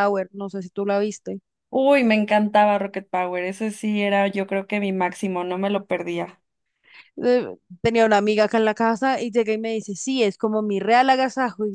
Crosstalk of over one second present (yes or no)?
no